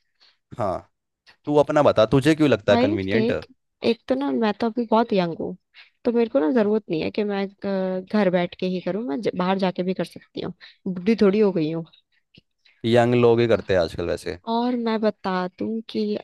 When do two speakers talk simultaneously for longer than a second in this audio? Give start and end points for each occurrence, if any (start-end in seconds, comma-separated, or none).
none